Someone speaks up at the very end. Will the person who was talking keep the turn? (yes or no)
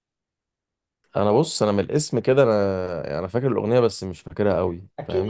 no